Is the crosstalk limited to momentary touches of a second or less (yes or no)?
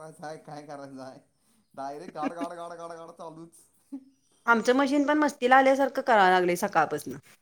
yes